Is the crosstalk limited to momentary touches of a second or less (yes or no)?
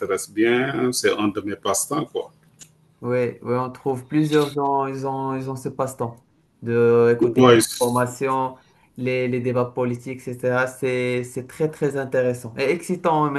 yes